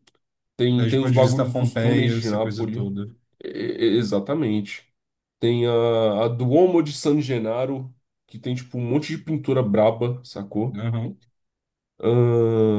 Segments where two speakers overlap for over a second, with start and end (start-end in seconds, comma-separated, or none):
0.8-2.9